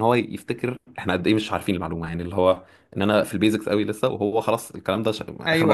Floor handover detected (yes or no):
yes